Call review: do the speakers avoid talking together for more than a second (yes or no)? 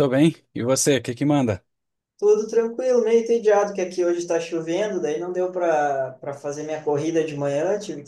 yes